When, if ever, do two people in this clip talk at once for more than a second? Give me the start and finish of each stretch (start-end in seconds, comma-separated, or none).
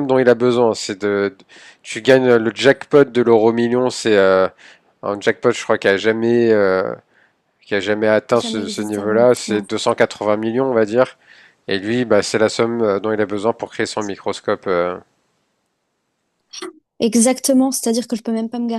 8.3-9.7